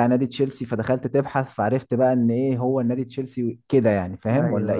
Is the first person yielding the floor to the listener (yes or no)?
yes